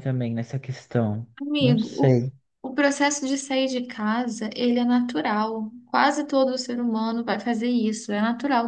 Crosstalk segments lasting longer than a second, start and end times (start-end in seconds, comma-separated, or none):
none